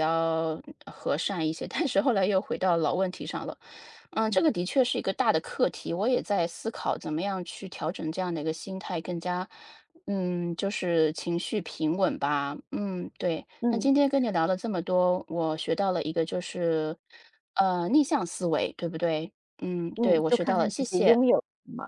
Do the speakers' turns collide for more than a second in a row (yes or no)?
yes